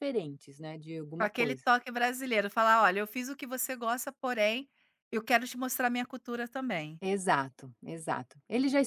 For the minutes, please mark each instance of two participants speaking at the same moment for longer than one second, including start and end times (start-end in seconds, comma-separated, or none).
none